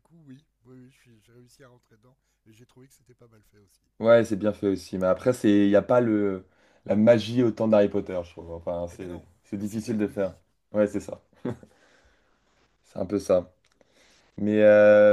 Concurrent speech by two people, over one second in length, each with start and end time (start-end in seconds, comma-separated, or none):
8.9-10.3